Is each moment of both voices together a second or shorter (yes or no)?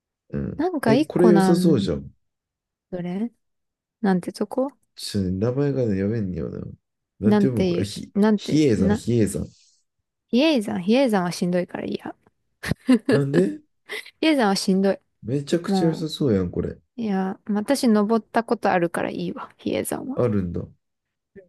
no